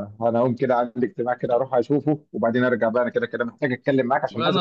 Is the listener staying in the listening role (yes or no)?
no